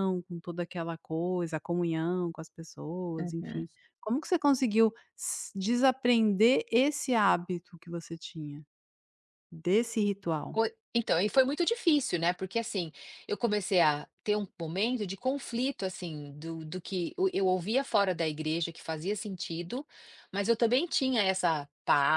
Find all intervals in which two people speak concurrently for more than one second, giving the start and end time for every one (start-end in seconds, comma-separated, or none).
none